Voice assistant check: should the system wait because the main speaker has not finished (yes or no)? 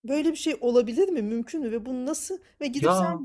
yes